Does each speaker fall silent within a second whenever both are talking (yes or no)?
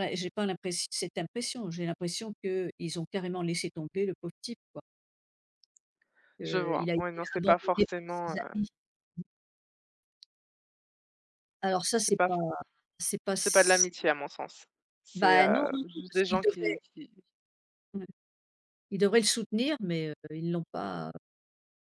no